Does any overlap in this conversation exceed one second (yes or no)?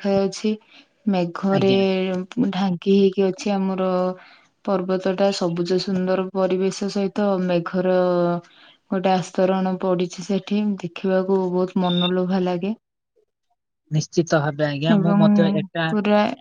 no